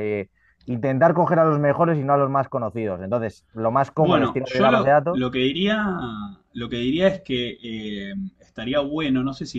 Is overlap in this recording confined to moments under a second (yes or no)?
no